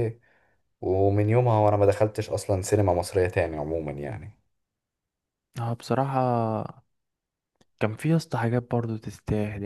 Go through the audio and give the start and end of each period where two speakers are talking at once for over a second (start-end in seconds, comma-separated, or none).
none